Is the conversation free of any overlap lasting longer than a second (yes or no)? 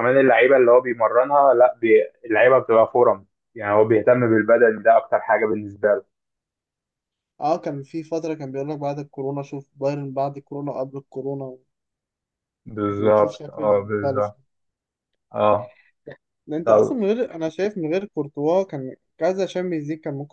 no